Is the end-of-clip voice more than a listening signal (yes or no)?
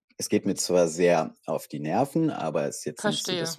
no